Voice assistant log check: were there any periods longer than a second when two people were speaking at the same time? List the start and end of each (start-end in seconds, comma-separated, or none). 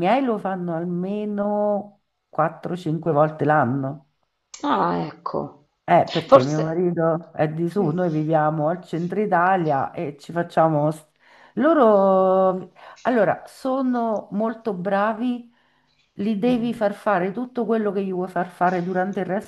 none